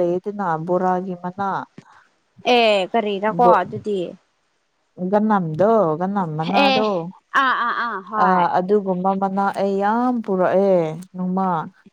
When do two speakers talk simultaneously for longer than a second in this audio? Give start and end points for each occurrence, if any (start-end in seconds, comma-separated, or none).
none